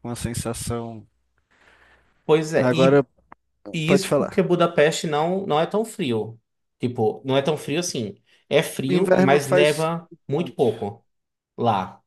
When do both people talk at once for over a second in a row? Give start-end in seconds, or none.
8.9-10.6